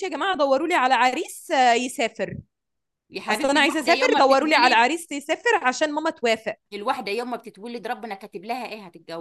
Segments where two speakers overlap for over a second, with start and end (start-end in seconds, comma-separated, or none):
3.3-4.8